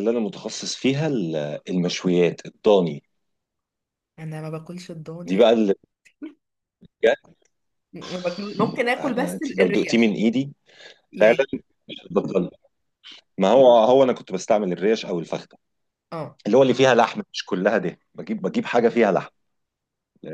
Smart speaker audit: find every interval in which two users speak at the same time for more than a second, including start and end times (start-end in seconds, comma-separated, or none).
9.0-10.2